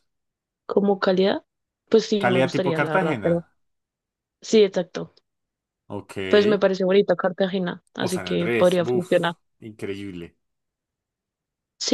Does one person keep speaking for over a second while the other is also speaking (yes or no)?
yes